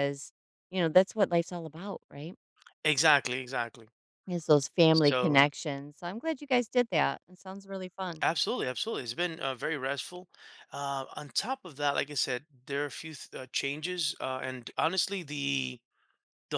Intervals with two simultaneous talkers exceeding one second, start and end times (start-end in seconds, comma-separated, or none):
none